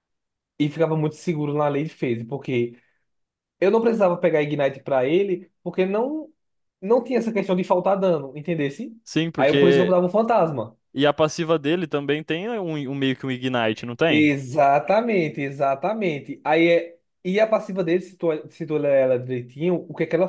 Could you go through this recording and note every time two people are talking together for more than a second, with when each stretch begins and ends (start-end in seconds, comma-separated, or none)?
none